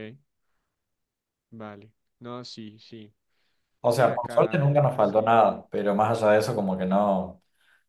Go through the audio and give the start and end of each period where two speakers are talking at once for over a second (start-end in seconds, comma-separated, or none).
3.9-5.4